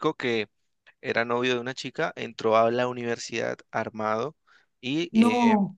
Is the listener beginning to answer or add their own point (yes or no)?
no